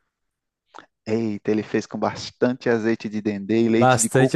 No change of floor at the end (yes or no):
no